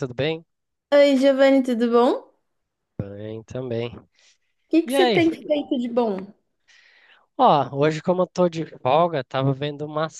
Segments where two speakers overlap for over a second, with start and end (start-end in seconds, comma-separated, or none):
none